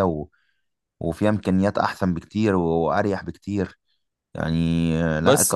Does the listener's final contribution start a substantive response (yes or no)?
yes